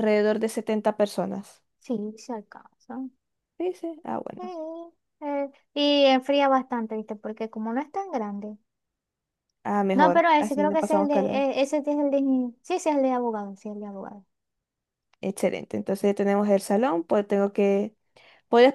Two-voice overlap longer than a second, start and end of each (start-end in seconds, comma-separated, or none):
10.0-11.4